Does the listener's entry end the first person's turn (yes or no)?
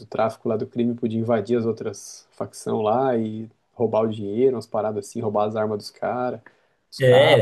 yes